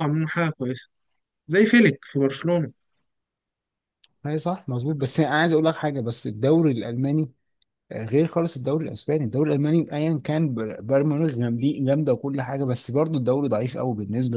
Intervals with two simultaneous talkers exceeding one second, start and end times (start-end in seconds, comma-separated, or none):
none